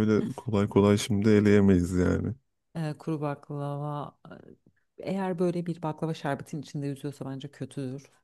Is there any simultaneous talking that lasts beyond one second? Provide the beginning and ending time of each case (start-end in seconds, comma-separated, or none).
none